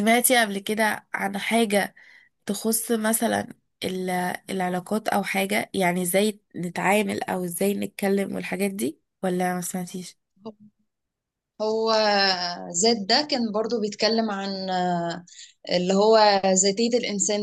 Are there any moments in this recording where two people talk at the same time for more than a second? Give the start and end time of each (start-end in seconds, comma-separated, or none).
none